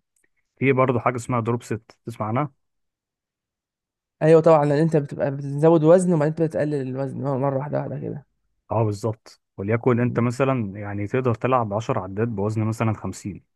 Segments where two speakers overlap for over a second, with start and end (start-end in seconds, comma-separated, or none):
none